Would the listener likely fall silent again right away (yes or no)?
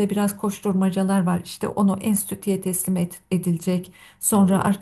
yes